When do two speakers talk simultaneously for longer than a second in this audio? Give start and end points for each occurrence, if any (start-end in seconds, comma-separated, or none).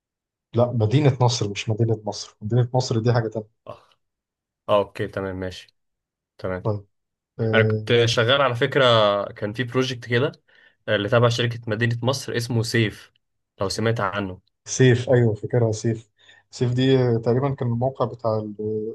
none